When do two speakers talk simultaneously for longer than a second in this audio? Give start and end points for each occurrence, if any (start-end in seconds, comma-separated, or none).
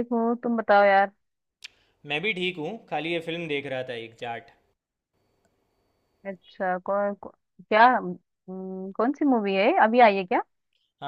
none